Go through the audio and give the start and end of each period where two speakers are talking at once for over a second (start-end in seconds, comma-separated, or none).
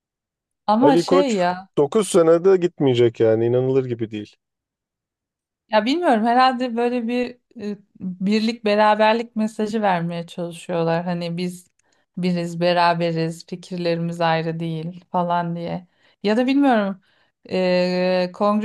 none